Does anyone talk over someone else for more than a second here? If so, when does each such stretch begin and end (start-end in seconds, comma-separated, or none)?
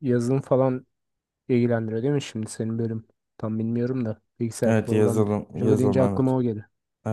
4.7-6.3